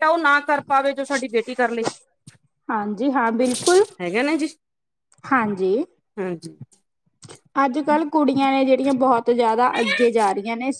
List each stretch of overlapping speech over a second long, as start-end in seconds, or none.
none